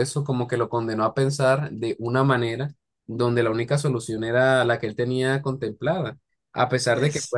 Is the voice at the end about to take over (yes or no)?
no